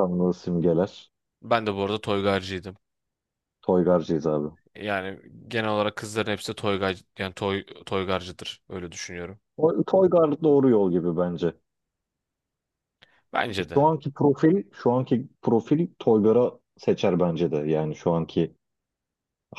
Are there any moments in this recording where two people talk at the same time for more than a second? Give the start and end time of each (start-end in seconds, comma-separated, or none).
none